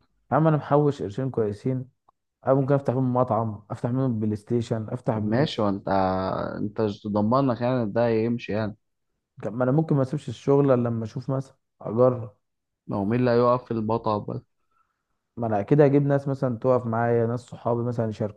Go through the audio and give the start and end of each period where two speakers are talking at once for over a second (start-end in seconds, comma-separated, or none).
none